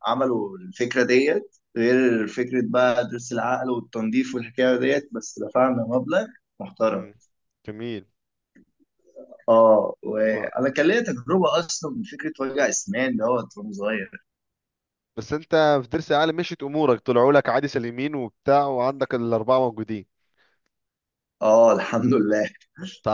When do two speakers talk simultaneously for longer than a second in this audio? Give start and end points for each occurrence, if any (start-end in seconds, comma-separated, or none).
none